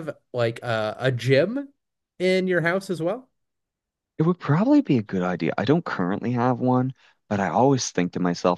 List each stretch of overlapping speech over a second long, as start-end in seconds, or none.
none